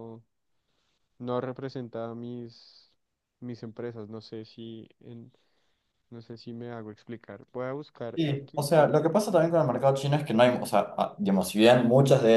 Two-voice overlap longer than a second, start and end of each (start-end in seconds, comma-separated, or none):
none